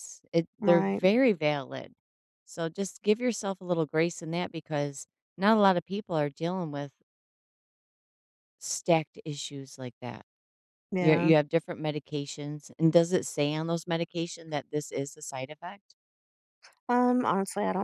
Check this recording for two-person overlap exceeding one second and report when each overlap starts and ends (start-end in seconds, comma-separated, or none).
none